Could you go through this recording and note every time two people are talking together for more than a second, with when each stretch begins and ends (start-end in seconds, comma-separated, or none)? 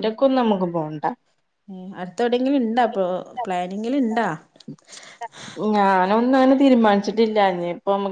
none